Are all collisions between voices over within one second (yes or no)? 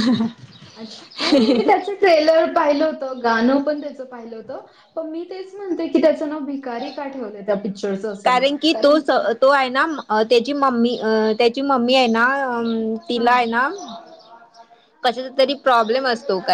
yes